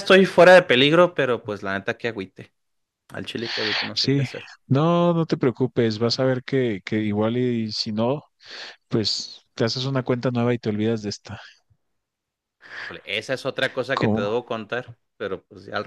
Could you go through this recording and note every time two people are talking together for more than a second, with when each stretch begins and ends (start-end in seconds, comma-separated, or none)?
none